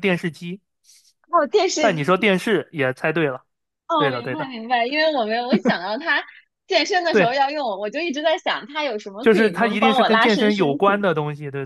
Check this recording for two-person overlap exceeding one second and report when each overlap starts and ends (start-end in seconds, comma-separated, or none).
9.2-11.0